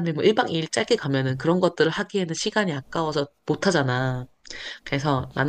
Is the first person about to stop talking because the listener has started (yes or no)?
no